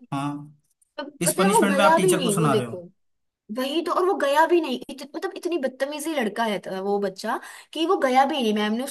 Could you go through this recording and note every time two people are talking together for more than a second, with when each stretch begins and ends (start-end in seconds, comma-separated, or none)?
1.2-2.8